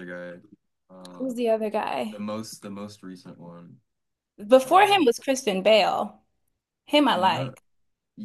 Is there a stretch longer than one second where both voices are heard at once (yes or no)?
no